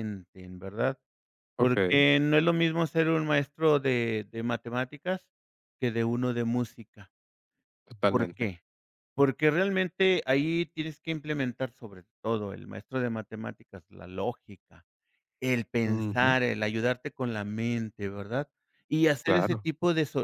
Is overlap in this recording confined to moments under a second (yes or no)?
yes